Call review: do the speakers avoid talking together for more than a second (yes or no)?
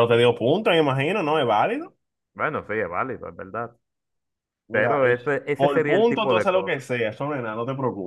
no